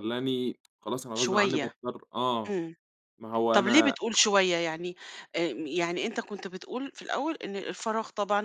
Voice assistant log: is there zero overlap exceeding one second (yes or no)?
yes